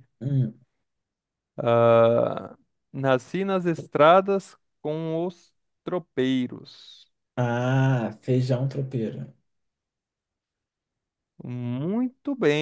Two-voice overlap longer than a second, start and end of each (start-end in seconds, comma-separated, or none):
none